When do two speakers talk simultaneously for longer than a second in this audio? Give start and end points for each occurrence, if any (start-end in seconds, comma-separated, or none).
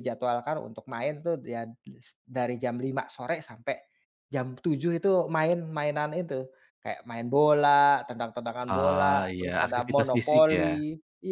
8.7-10.6